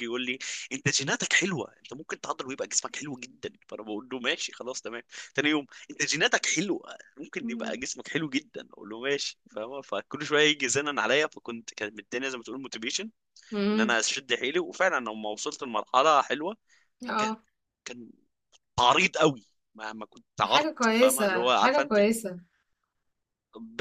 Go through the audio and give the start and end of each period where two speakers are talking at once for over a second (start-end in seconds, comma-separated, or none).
20.4-22.0